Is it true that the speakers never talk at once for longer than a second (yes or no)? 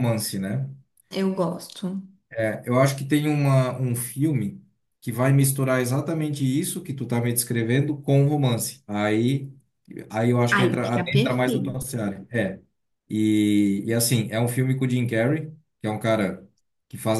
no